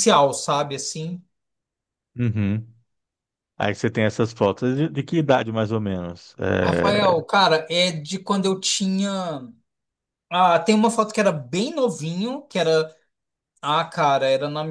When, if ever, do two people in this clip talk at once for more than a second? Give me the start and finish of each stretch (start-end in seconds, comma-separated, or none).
none